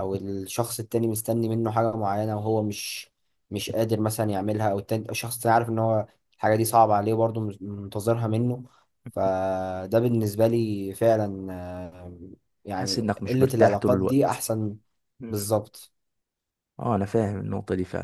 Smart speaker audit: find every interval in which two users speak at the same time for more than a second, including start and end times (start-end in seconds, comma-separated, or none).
12.7-14.4